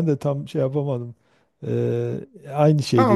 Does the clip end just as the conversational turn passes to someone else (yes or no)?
yes